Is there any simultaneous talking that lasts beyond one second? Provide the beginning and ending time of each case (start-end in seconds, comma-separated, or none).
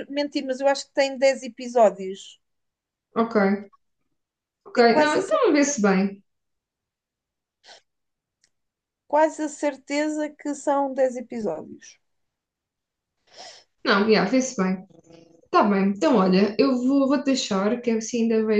4.7-6.0